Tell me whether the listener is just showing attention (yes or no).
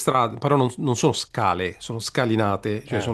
yes